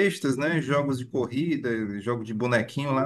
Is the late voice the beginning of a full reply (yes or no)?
no